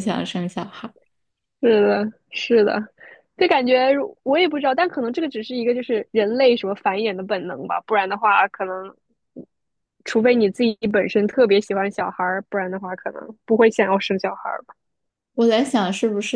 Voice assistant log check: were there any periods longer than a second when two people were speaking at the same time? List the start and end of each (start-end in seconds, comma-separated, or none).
none